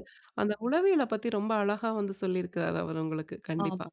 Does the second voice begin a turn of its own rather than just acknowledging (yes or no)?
yes